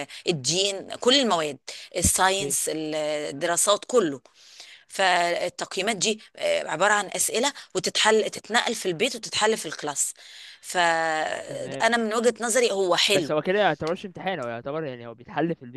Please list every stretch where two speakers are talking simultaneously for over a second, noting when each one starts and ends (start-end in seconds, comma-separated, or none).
none